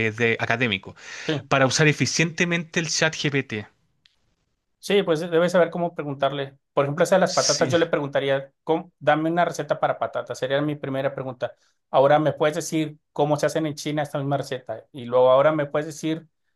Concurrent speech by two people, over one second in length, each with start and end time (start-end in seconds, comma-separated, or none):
none